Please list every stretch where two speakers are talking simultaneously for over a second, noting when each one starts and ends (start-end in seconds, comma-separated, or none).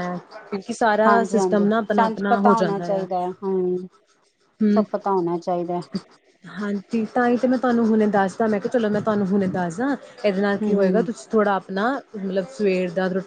1.1-3.0